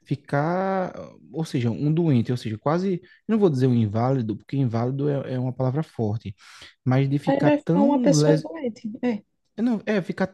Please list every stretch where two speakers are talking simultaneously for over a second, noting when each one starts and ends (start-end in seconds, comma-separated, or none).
7.3-8.5